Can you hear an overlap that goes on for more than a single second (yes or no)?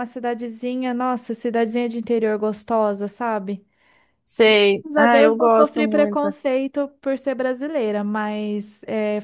yes